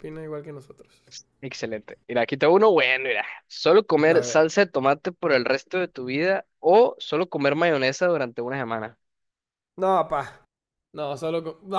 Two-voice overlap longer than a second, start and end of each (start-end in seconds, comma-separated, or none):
none